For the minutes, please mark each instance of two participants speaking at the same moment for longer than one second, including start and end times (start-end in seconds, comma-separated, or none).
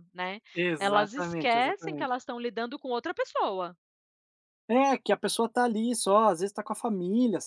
0.8-2.2